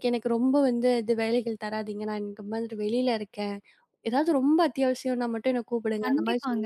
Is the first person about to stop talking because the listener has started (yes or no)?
yes